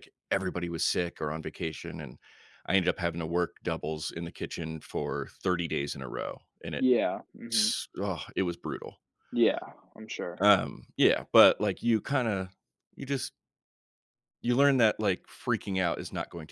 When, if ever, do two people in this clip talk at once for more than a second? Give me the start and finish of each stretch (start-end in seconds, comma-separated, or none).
none